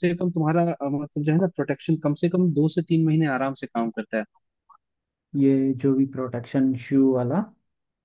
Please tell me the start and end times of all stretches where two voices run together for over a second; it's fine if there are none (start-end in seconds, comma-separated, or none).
none